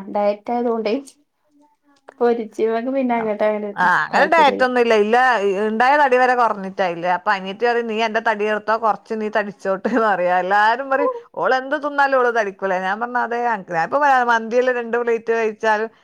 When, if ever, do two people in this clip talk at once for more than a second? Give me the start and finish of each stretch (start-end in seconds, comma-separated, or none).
none